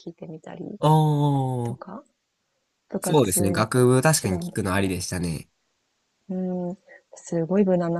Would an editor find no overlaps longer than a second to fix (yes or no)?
no